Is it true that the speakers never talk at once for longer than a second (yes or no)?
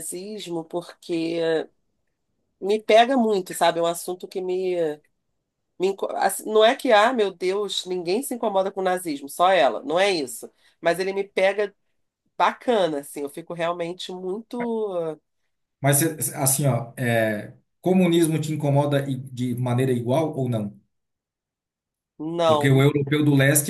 yes